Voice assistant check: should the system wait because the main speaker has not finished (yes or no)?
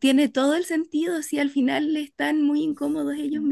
no